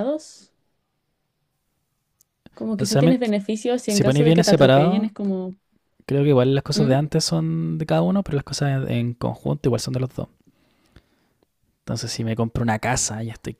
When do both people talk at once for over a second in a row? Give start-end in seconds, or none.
3.9-5.1